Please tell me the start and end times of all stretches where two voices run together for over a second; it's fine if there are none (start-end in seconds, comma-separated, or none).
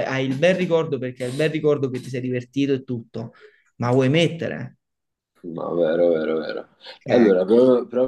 none